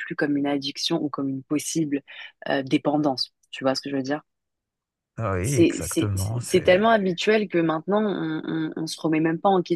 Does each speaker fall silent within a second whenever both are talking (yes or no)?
no